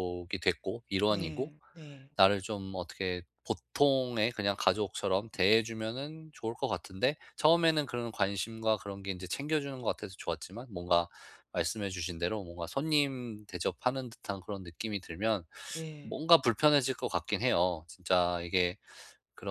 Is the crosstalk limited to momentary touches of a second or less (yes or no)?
yes